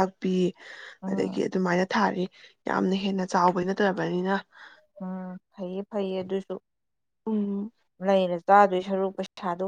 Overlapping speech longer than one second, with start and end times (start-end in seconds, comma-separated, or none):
none